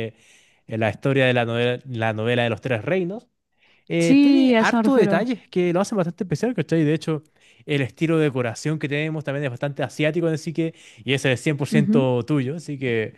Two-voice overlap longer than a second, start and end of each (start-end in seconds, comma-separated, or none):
4.0-5.3